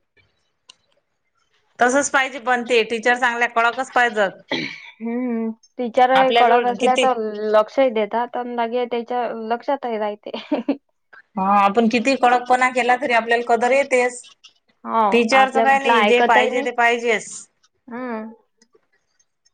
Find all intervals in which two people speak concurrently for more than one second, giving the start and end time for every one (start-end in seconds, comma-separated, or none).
15.1-16.7